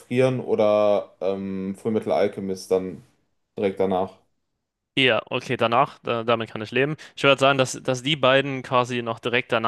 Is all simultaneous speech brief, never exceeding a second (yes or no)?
yes